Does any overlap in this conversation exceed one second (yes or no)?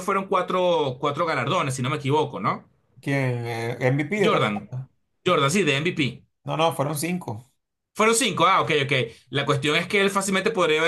no